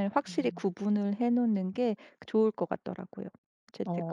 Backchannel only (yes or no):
no